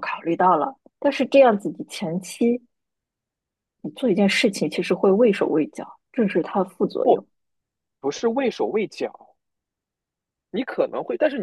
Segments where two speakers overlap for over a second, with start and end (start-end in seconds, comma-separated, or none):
none